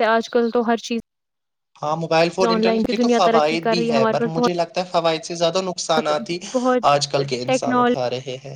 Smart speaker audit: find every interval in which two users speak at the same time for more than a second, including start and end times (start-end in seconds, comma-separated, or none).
2.5-4.4